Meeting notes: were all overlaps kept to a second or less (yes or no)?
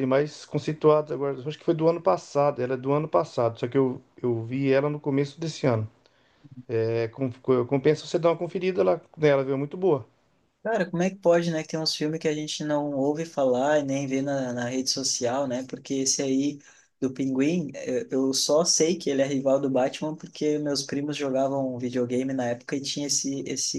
yes